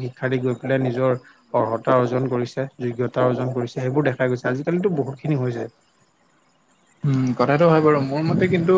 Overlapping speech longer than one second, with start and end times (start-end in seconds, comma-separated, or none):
none